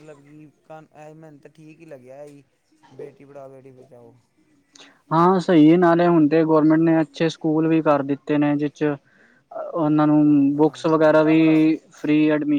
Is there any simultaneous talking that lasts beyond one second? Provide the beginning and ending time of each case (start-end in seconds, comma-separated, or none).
9.8-11.4